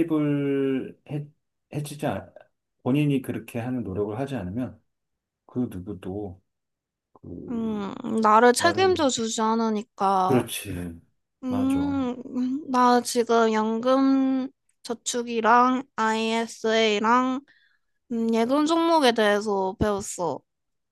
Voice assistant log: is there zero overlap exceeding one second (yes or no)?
yes